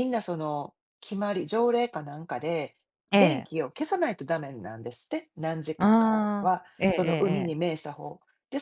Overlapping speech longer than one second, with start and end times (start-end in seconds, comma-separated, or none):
5.8-7.7